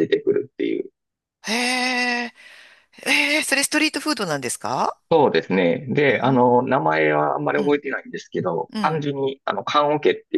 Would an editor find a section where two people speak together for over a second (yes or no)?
no